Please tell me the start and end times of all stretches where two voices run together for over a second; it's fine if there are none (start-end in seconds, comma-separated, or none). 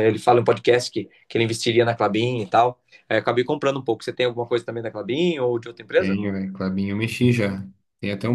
none